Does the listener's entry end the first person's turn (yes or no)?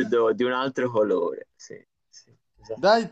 yes